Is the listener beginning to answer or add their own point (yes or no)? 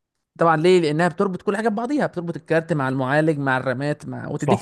yes